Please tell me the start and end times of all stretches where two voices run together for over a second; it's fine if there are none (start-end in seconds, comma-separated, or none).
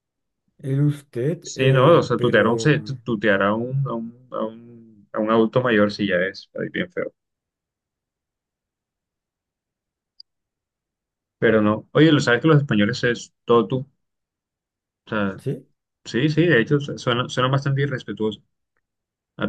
1.4-2.8